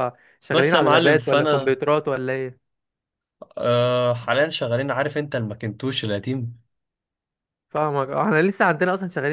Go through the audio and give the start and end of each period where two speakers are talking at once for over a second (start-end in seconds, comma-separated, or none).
0.5-1.8